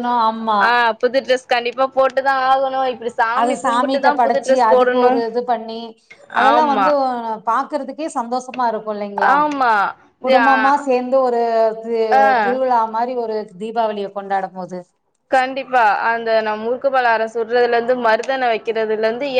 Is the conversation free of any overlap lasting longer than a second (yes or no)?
no